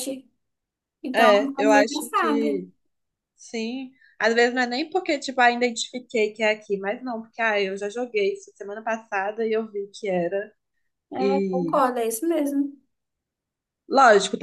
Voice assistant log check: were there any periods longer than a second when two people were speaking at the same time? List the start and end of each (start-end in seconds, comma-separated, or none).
1.1-2.7